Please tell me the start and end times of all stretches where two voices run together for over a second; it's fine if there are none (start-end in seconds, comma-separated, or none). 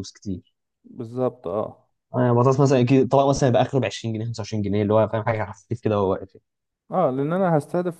none